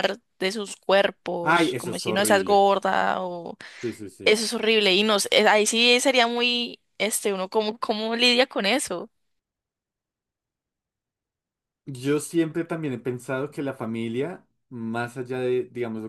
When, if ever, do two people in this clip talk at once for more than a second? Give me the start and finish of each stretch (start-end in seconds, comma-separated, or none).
1.4-2.6